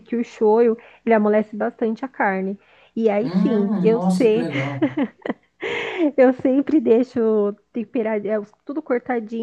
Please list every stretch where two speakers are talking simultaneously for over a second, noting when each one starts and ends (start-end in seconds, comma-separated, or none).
3.2-4.5